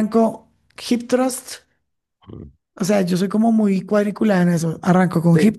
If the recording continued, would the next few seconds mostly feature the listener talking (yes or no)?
no